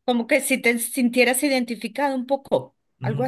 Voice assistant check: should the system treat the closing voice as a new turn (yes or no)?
yes